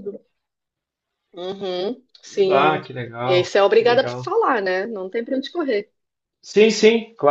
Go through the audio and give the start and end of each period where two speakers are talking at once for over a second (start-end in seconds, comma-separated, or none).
2.5-4.3